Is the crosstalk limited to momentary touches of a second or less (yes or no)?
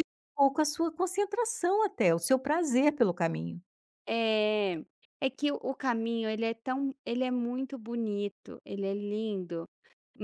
yes